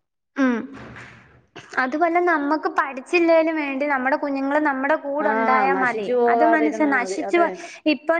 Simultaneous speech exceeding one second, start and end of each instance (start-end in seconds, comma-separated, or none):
5.3-7.4